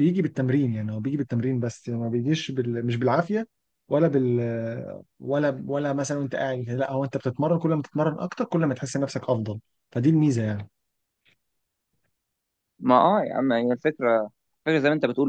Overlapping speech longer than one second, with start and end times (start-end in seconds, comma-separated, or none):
none